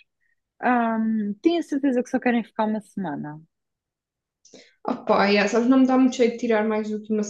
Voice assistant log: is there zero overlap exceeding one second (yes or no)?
yes